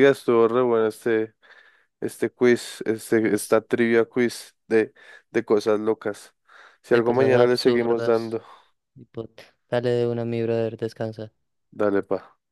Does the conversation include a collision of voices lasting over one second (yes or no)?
yes